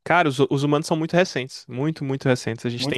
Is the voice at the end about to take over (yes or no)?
no